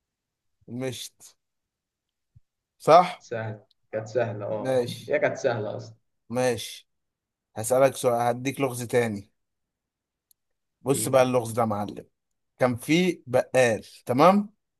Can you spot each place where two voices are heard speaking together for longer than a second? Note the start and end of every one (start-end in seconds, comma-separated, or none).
none